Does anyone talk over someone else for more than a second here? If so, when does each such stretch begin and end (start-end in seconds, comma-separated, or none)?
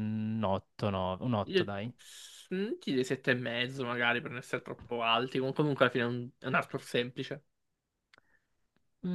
none